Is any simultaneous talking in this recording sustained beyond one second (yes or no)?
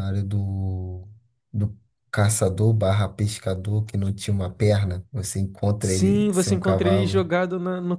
yes